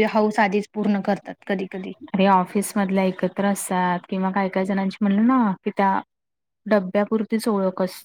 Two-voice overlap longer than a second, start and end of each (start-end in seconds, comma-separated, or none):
none